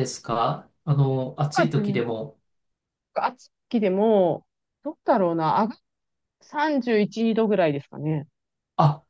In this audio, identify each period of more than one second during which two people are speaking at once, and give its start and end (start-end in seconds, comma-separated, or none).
none